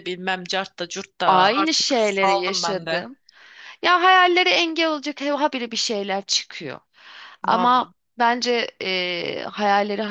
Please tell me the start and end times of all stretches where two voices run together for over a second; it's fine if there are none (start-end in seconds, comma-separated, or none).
1.2-3.1